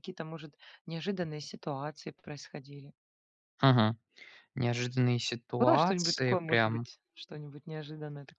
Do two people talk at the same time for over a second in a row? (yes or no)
yes